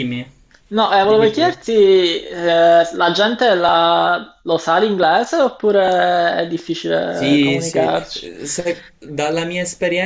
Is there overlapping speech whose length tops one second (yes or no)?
yes